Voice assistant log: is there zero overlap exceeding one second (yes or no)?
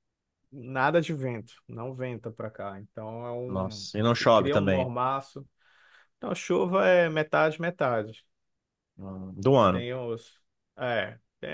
no